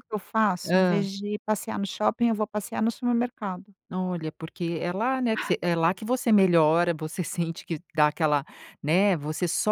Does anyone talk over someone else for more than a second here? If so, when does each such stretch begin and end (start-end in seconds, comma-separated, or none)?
none